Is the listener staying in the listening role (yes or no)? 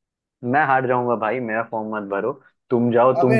no